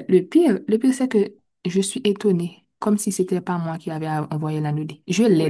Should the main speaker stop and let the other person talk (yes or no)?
yes